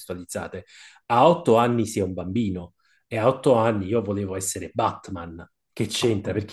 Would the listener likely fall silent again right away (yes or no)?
yes